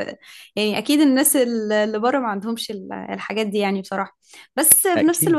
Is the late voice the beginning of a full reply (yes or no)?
no